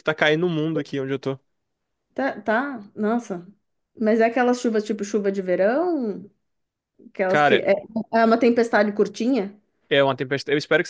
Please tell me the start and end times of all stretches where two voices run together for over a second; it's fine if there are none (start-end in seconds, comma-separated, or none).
none